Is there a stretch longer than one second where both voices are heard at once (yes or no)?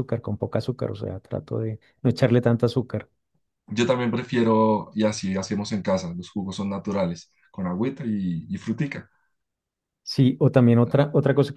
no